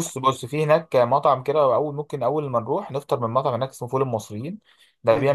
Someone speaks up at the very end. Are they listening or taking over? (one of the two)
listening